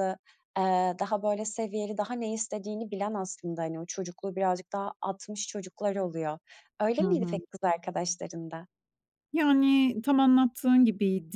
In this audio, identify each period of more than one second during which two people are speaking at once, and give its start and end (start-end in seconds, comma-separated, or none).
none